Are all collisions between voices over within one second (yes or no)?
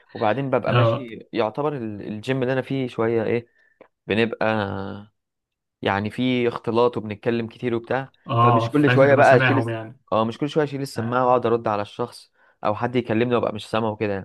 no